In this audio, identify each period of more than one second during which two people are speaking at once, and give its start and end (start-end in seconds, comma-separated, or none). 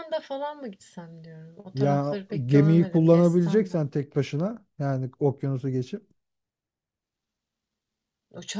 1.7-3.8